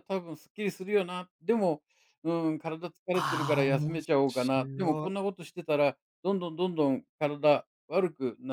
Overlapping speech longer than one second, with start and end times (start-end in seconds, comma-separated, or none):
3.1-5.2